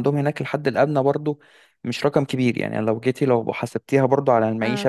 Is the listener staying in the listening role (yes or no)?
no